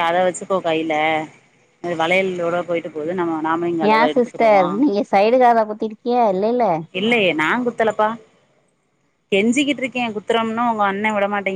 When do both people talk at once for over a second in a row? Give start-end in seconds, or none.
none